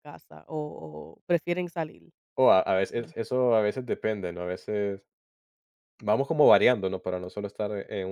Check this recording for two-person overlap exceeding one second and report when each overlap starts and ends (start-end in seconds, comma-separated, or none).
none